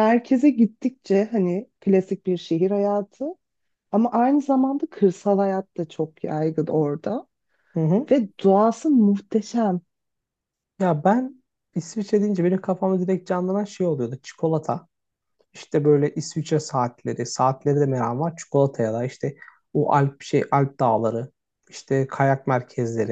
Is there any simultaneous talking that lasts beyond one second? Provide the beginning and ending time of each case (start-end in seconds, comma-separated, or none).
none